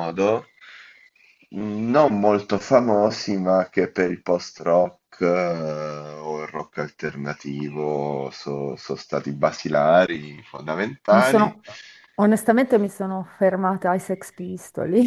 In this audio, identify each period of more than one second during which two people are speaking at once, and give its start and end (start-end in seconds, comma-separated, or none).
none